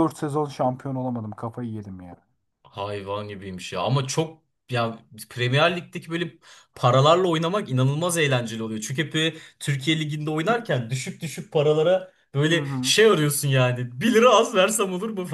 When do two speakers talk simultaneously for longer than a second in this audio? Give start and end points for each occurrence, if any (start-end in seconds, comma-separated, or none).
none